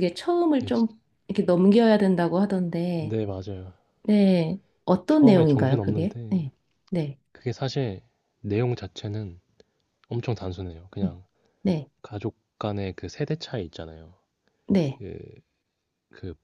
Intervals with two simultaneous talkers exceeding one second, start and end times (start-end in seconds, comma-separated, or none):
5.1-6.5